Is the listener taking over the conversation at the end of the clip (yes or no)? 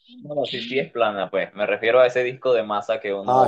no